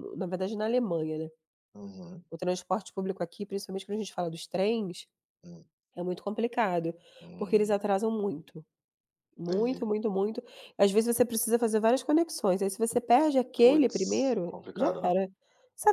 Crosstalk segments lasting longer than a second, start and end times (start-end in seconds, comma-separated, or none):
13.5-15.2